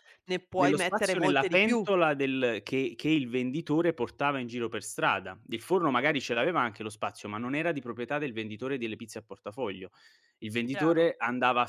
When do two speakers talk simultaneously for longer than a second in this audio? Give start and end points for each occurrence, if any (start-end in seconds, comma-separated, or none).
0.6-1.9